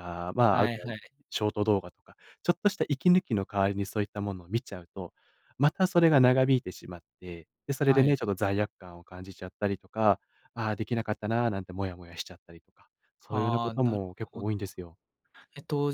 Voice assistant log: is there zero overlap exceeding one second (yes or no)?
no